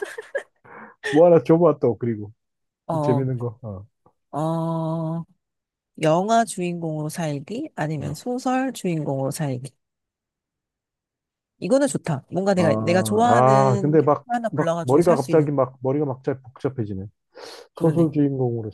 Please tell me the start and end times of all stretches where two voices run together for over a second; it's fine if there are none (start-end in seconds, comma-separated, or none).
12.6-15.5